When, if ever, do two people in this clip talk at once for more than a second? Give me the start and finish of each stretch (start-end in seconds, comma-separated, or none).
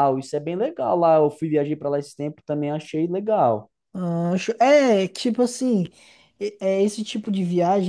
none